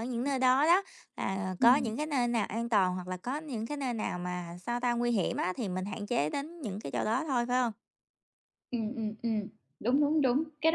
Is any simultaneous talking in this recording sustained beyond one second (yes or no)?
no